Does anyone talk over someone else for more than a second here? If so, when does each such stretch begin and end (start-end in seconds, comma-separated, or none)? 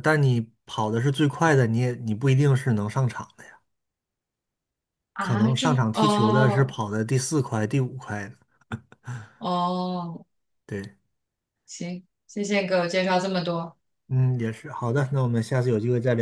5.2-6.8